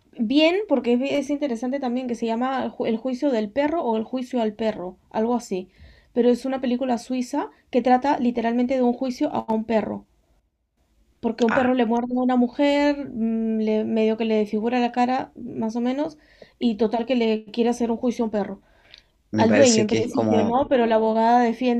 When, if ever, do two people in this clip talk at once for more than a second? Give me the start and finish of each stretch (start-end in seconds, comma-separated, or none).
19.4-20.7